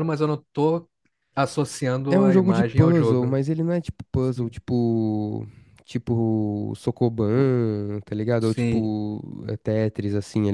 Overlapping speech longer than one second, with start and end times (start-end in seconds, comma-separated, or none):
2.1-3.4